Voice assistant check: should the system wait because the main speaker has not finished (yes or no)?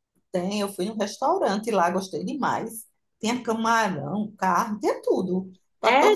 no